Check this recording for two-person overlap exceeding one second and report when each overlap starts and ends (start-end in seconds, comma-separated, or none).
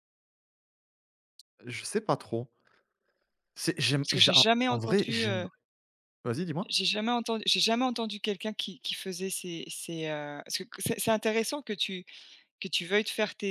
4.0-5.5